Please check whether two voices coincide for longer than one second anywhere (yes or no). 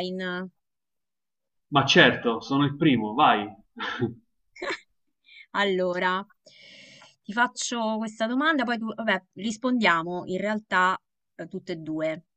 no